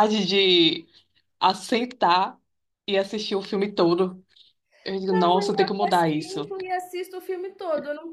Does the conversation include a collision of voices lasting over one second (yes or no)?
yes